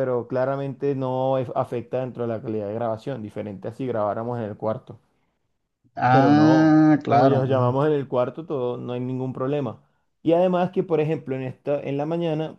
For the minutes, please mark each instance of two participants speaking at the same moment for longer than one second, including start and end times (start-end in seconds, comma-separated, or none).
6.1-7.8